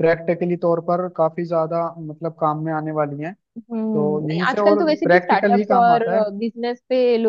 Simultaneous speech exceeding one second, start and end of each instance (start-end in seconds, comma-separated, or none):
3.9-6.0